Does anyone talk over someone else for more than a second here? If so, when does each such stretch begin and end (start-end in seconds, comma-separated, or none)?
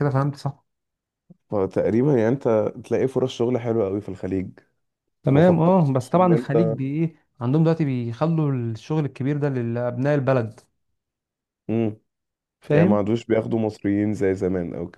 5.3-6.8